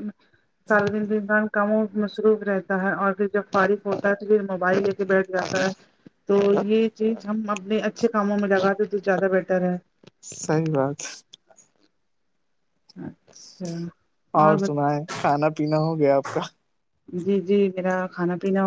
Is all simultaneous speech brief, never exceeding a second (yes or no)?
yes